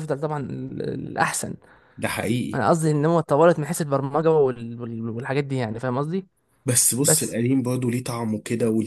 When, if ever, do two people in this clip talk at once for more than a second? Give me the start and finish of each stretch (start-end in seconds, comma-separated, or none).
none